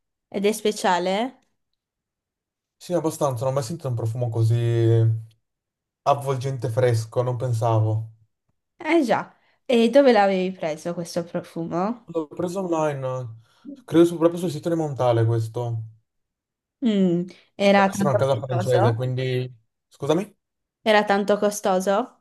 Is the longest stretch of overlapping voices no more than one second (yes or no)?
no